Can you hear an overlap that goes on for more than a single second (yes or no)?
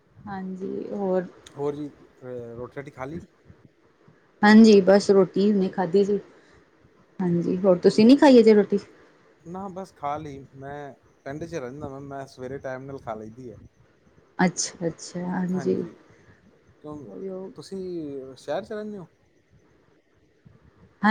no